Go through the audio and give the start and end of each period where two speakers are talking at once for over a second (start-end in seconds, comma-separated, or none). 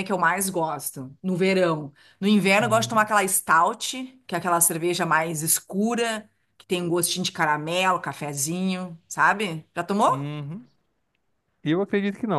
none